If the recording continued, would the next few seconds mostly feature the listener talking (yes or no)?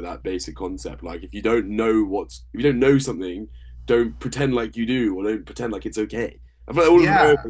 no